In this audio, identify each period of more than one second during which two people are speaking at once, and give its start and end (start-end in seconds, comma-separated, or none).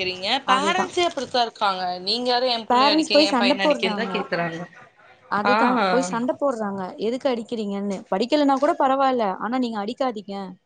2.7-4.0